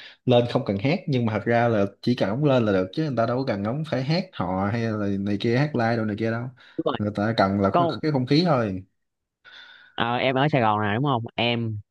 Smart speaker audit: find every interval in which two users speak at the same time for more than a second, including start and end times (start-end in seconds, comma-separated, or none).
none